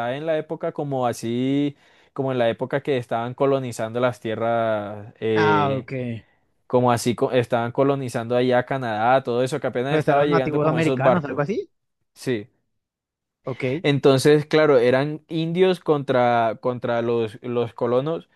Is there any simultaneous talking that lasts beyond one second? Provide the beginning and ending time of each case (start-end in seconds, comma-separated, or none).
9.9-11.5